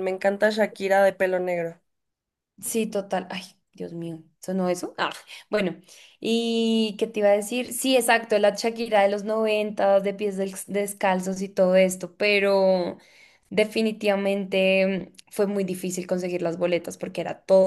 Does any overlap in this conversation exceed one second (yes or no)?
no